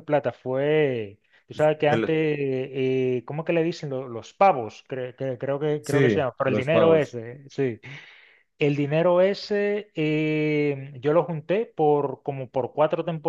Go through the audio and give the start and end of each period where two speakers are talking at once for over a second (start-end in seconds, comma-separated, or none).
5.8-7.1